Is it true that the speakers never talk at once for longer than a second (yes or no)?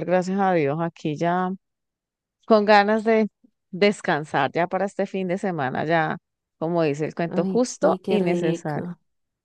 no